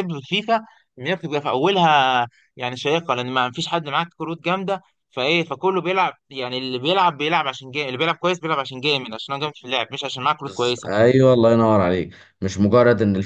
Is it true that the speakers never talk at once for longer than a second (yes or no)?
yes